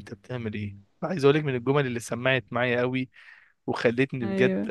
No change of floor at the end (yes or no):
yes